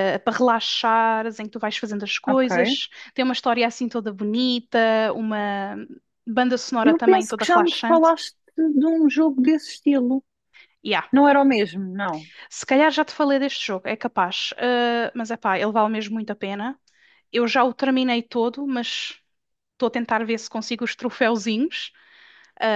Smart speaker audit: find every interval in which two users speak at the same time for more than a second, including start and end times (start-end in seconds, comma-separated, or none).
6.8-8.1